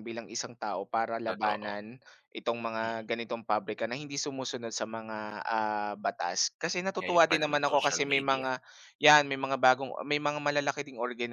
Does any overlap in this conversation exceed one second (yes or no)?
yes